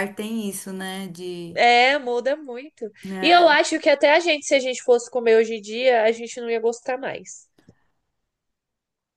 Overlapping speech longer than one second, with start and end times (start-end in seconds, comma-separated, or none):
none